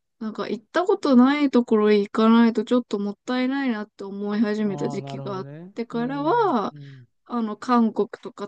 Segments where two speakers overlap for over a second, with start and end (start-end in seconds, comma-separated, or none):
4.6-6.8